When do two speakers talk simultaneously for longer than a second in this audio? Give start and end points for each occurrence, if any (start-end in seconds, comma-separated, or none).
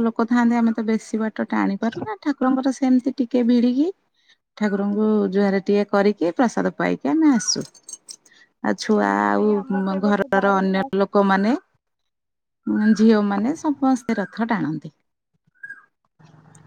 9.2-11.0